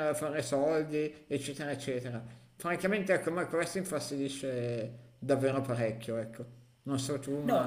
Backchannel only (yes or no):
no